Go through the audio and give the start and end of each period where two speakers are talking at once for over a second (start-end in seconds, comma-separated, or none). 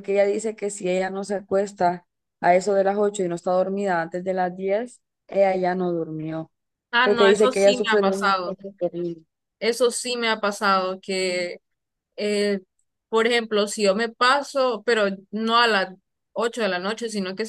7.0-8.6